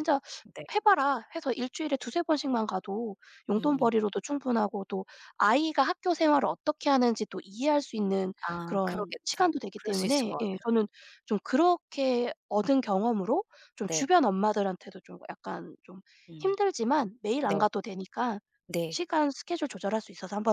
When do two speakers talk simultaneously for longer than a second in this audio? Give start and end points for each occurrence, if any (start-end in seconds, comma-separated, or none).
8.5-10.7